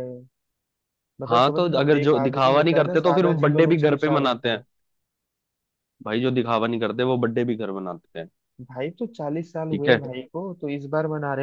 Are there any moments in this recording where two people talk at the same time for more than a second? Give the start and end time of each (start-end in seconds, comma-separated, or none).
1.3-4.6